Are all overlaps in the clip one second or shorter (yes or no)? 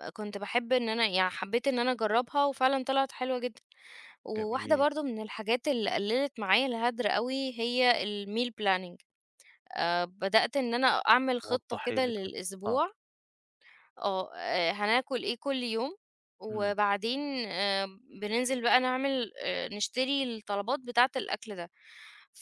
no